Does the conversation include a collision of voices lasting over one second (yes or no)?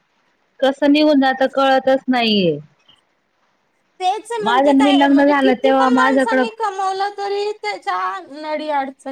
yes